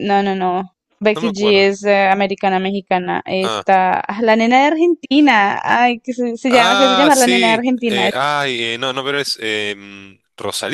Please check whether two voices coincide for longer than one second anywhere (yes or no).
yes